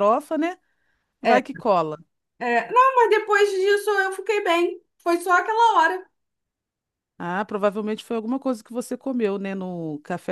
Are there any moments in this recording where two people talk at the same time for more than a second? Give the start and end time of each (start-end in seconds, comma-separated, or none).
none